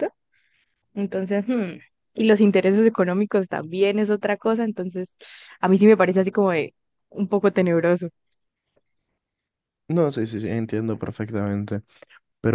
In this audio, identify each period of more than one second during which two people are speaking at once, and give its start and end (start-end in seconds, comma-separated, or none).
none